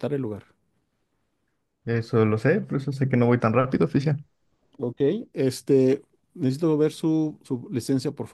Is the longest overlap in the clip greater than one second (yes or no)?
no